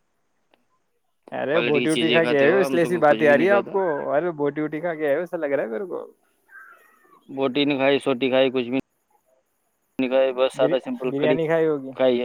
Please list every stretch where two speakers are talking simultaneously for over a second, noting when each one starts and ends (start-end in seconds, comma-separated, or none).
1.5-3.8